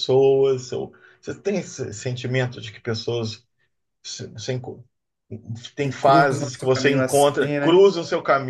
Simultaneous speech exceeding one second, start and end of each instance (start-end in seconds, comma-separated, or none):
5.8-7.8